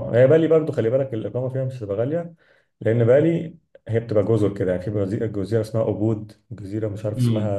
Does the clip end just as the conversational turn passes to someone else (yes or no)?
no